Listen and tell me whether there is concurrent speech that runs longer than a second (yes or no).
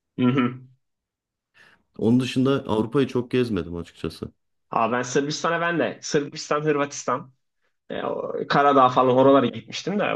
no